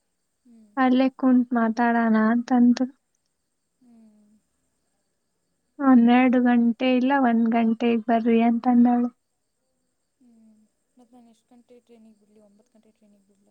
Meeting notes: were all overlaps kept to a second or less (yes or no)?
yes